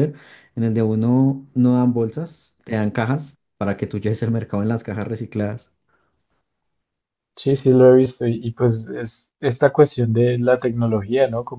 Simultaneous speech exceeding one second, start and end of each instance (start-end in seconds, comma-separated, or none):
none